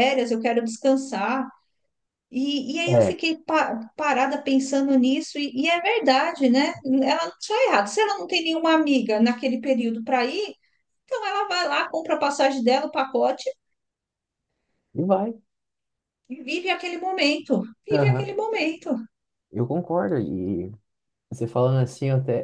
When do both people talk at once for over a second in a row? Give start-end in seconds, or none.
none